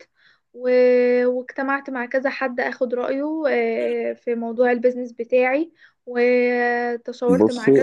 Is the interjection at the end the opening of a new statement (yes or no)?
no